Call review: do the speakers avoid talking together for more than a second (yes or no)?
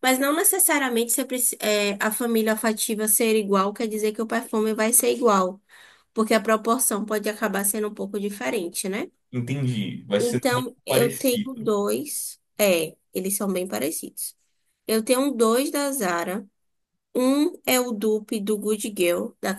no